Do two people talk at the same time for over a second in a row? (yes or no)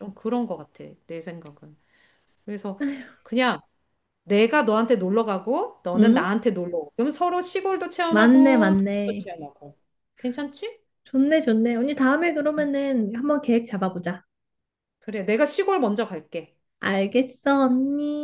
yes